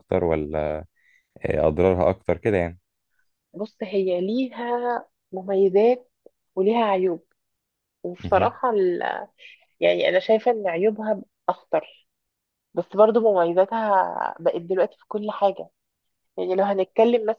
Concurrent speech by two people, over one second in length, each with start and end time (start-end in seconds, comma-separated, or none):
none